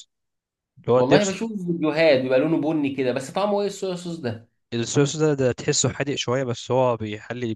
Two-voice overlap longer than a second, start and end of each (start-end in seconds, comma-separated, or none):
none